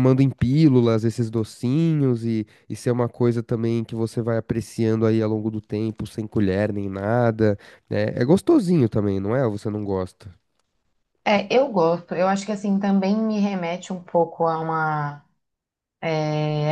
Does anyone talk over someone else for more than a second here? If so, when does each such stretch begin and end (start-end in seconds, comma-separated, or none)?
none